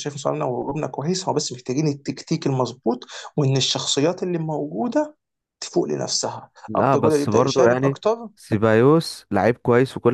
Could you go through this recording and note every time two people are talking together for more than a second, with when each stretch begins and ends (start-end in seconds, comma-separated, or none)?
6.7-8.0